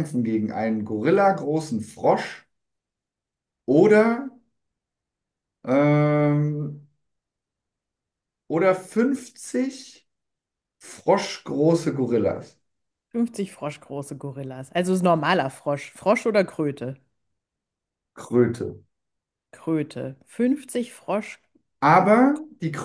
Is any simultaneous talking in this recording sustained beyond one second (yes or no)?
no